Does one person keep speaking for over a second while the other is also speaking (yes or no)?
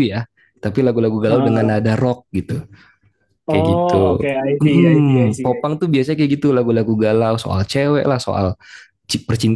yes